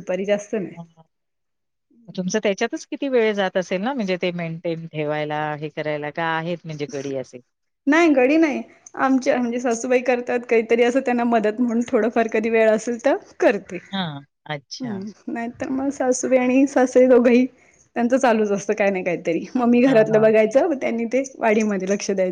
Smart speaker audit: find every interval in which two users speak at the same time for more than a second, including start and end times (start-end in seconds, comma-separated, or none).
none